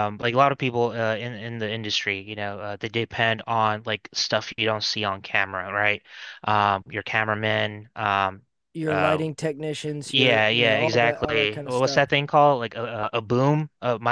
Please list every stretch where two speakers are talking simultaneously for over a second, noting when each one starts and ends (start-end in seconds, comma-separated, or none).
10.1-12.0